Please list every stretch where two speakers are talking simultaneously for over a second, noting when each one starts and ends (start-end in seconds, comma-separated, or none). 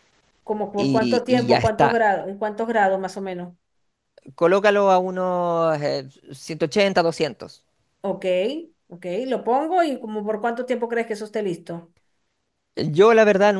0.8-2.0